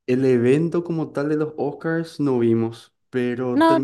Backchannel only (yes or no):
yes